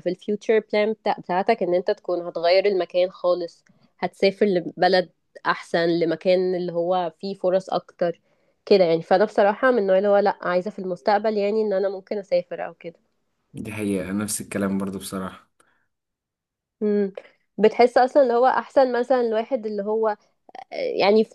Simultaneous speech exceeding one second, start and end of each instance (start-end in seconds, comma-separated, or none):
none